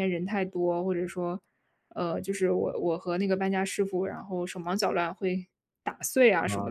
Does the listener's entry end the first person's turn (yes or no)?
yes